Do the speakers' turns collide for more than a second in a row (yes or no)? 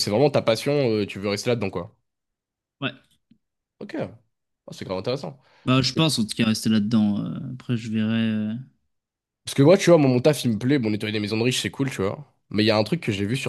no